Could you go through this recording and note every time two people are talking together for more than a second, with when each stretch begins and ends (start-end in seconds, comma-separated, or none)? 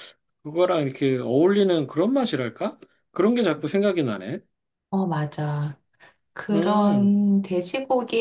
none